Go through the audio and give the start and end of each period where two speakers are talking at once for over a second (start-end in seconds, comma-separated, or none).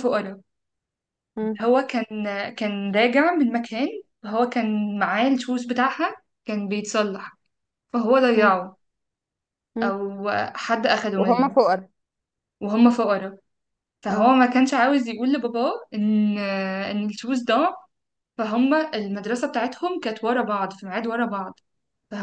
none